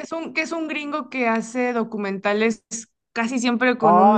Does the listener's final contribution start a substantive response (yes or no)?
yes